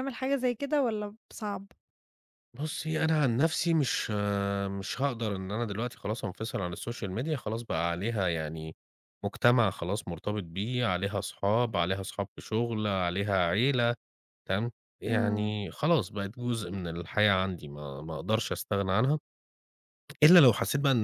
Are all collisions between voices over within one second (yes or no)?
yes